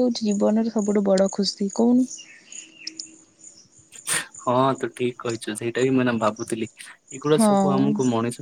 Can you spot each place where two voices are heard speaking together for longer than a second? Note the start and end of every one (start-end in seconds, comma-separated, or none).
none